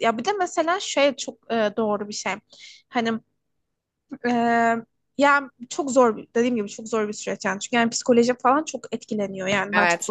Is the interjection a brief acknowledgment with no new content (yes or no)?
yes